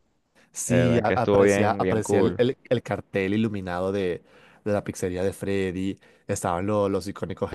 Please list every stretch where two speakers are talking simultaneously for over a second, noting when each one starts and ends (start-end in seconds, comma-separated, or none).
0.7-2.4